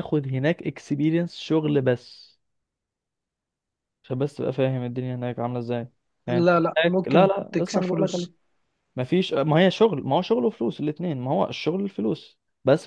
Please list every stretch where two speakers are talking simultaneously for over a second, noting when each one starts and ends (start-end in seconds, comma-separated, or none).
6.3-8.3